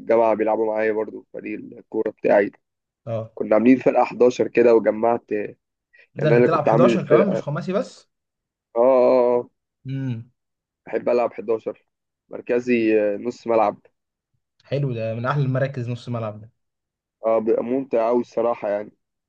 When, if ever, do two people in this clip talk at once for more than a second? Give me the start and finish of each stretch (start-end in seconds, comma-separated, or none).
6.2-7.5